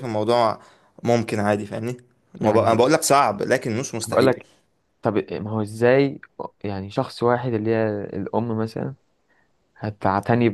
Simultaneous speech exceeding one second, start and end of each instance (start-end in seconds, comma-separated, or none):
none